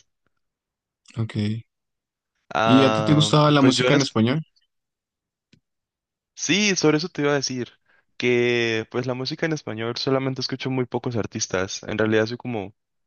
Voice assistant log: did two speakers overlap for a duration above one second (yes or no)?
yes